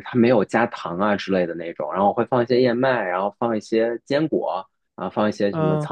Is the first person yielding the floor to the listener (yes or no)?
no